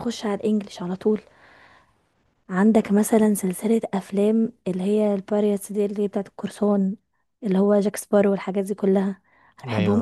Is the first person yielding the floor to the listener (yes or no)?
no